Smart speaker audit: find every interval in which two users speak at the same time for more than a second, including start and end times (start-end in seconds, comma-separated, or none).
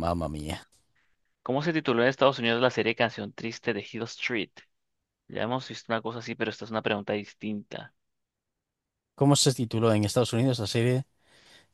none